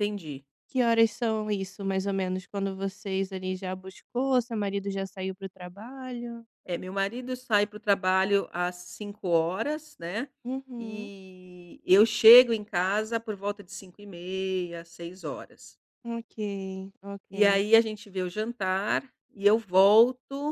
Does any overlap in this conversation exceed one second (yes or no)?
no